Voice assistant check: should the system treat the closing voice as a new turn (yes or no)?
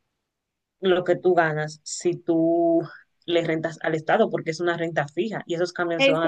yes